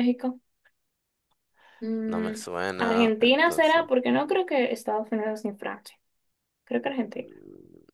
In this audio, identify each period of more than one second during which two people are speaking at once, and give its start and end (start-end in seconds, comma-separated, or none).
2.1-3.8